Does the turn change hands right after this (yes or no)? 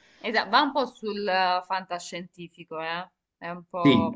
yes